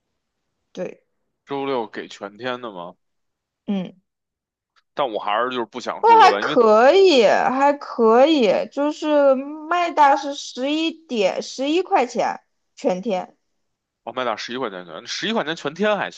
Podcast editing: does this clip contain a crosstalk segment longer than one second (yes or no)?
no